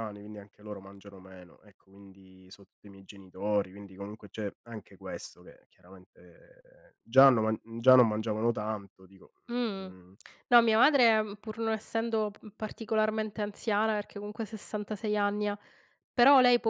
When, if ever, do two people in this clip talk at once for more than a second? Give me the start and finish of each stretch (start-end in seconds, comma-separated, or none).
none